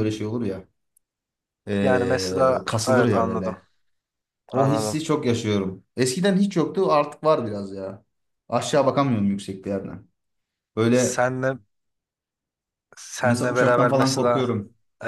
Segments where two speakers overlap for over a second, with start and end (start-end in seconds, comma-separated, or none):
1.8-3.6, 13.2-14.5